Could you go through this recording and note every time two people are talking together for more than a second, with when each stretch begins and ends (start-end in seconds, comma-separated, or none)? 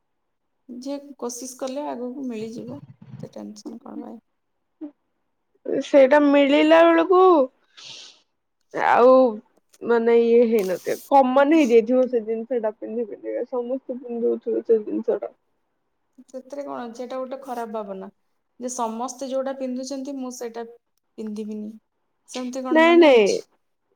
none